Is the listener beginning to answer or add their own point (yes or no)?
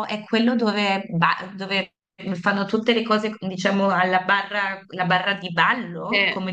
yes